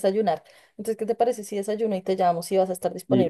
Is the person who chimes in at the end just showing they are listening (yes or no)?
no